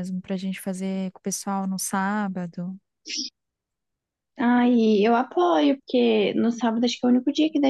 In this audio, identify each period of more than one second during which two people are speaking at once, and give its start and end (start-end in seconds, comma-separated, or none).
none